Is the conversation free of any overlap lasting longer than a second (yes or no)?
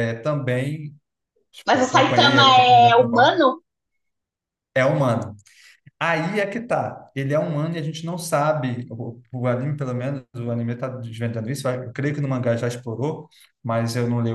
no